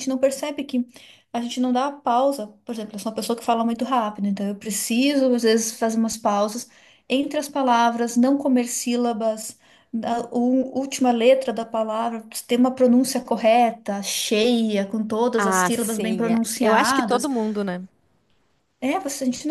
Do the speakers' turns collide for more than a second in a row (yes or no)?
yes